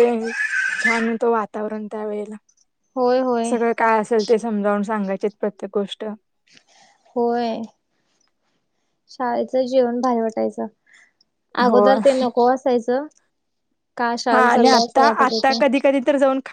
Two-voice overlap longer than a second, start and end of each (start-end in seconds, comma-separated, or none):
14.3-15.8